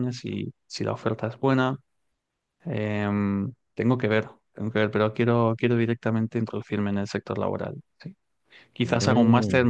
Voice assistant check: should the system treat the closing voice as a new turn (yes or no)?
no